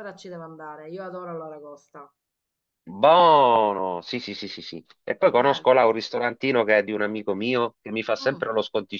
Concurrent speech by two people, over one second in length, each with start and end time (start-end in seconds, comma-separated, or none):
none